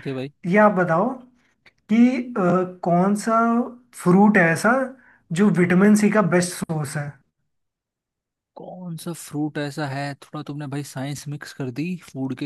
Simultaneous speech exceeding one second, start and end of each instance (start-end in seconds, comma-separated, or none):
none